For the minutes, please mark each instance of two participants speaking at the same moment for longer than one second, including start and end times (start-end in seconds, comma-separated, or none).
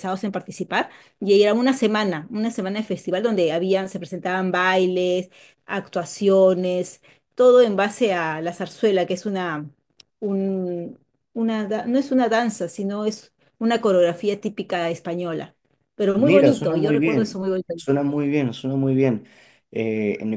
16.2-17.7